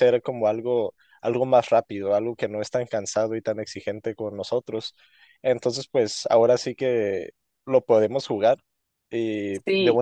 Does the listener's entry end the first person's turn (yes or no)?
no